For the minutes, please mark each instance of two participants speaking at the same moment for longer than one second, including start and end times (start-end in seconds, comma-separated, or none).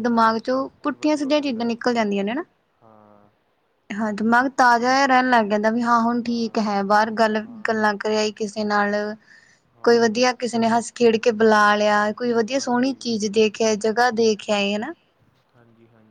0.5-1.9